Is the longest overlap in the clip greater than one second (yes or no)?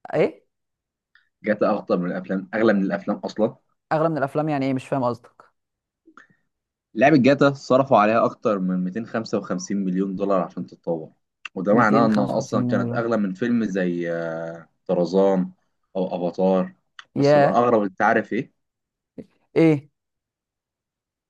yes